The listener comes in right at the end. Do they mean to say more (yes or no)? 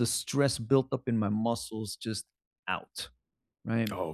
no